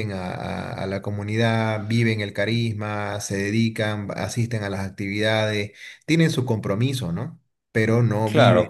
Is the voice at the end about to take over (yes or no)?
yes